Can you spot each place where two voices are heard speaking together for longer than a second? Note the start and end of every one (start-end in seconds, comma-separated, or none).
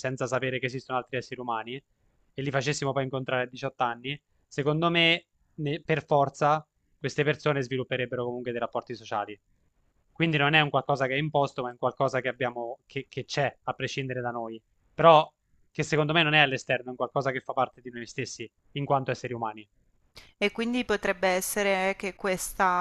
none